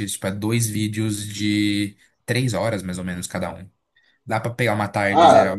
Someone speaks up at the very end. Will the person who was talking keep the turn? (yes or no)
no